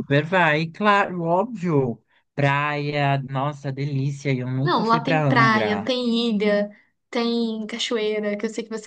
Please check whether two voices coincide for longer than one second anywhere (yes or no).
yes